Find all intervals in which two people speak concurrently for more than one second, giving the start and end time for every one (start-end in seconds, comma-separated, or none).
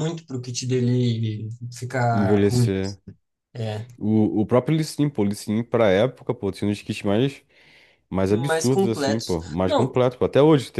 8.3-9.9